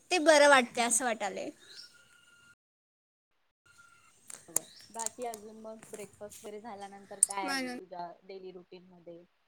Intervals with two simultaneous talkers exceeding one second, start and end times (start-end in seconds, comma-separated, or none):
none